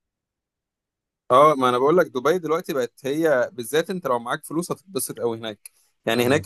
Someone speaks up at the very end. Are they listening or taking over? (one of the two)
listening